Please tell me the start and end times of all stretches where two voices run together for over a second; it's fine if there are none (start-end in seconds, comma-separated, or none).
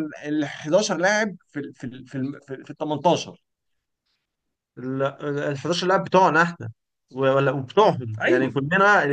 none